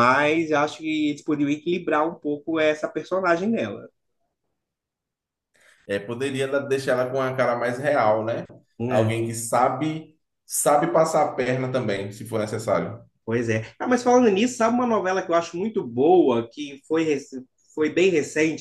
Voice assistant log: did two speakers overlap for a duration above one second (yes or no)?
no